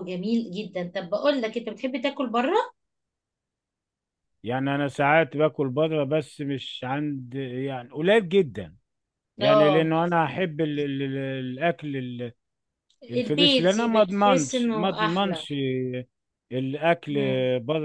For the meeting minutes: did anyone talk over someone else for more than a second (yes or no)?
yes